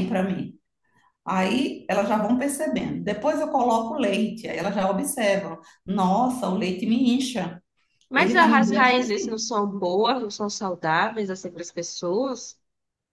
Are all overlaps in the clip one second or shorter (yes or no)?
no